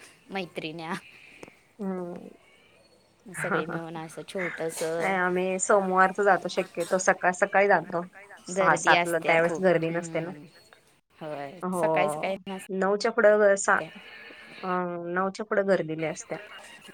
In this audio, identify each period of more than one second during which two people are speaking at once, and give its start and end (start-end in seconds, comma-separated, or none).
8.6-10.3